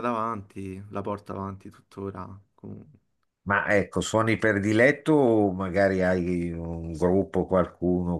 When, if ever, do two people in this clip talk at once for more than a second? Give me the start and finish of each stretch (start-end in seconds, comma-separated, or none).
none